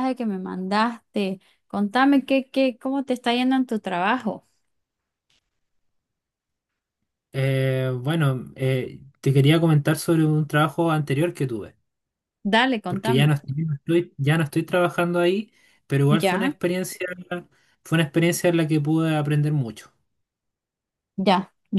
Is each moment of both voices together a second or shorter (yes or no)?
yes